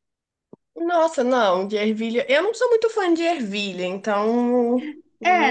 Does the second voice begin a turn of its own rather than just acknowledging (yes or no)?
yes